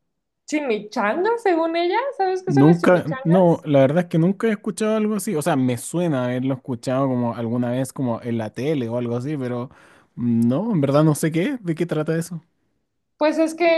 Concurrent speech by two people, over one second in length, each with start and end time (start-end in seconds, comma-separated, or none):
2.4-3.7